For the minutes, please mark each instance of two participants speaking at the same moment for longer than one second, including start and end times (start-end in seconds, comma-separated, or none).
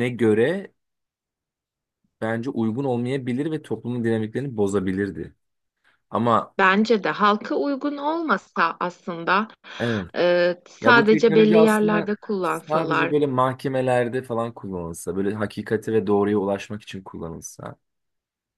10.8-13.1